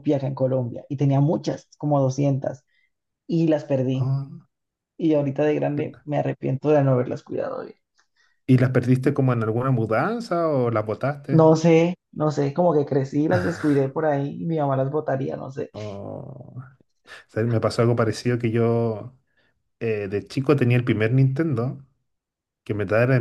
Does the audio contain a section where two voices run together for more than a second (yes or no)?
no